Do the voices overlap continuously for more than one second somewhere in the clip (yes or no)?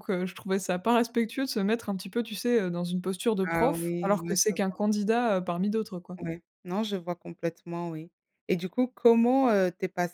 yes